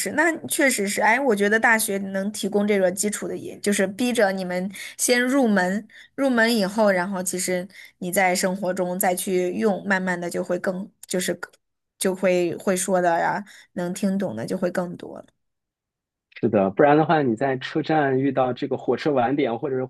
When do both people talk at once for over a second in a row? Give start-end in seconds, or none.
none